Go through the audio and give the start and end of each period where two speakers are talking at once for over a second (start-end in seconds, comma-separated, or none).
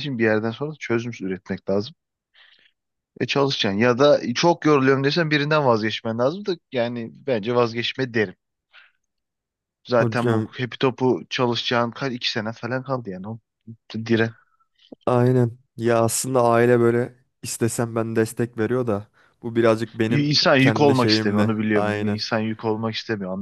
20.1-22.2